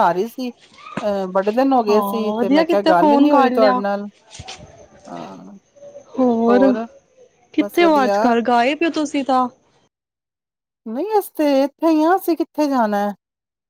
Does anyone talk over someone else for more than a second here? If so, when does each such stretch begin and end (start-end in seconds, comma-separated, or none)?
1.9-3.8